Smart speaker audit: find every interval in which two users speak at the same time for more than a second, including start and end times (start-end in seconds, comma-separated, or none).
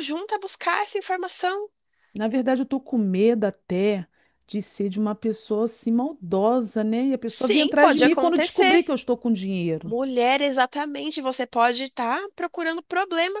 7.2-8.8